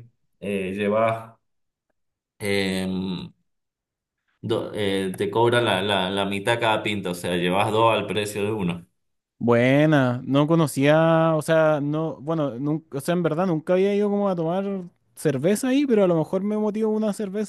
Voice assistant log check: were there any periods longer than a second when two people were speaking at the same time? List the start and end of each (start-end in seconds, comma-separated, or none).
none